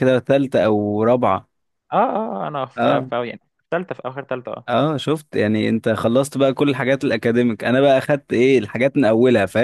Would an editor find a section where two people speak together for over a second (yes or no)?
no